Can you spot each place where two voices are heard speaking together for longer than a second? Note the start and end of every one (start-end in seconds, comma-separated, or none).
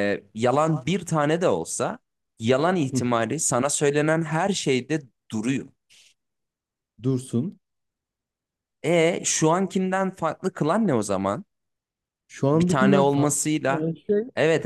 12.5-13.8